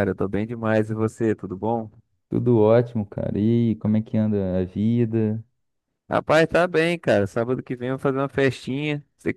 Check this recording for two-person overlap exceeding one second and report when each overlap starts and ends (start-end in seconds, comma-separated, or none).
none